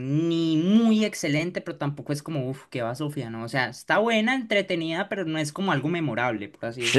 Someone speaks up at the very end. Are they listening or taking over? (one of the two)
taking over